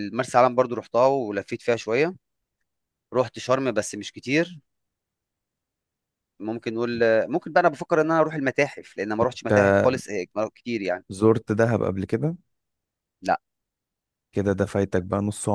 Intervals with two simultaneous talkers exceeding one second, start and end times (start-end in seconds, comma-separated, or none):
none